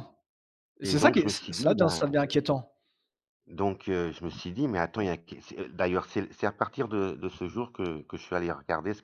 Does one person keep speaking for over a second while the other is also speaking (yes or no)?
yes